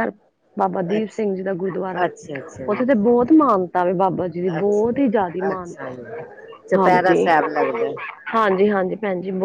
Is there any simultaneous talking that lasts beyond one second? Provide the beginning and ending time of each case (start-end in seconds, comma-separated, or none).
4.6-5.9